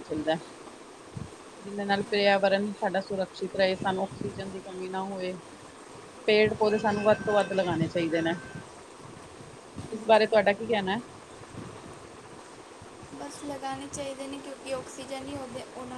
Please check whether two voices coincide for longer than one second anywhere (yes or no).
yes